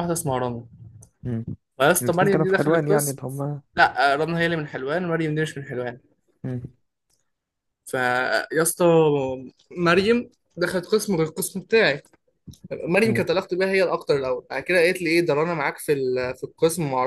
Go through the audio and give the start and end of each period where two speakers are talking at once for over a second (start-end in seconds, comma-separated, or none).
2.0-3.2